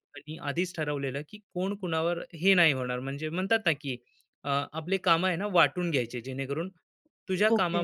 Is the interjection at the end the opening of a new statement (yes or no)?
yes